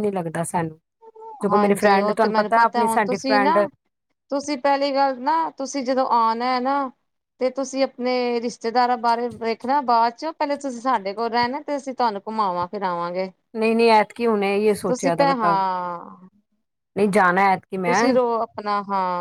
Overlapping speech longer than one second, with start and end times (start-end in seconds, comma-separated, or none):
1.5-3.6